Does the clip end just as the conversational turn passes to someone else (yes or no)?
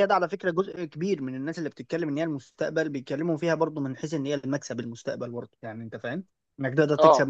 no